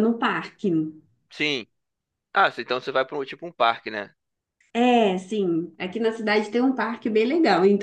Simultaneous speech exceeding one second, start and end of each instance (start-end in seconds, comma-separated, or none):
none